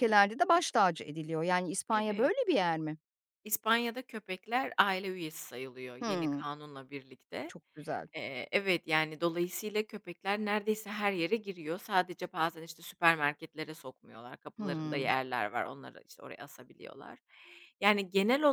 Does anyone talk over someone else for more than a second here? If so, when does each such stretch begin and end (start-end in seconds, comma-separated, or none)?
none